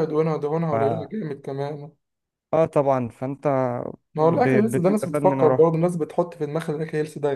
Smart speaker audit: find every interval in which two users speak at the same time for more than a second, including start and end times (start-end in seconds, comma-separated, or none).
4.2-5.7